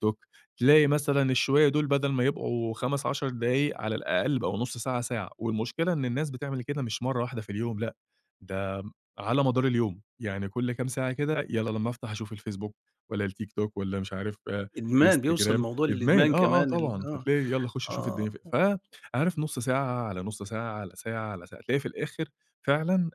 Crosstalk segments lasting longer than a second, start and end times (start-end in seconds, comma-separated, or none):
15.1-17.2